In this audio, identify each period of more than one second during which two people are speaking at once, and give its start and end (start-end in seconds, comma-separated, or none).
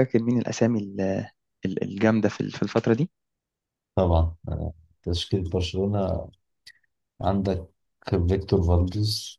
none